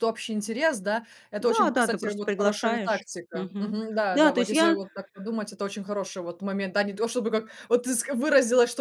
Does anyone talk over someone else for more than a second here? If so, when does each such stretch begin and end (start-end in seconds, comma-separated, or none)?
1.4-4.8